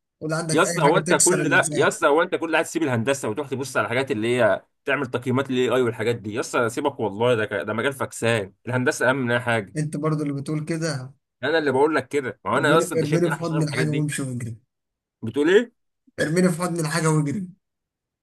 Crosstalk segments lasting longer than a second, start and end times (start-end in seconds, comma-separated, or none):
0.5-1.9, 12.6-14.1